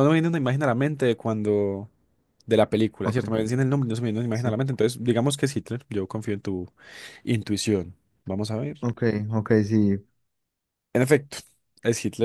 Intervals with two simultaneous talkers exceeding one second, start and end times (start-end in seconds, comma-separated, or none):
none